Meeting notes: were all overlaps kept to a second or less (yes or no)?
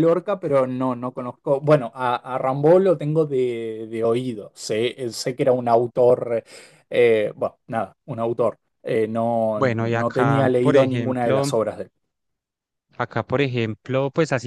no